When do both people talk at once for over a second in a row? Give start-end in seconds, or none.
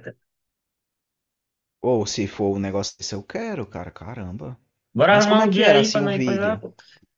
5.1-6.6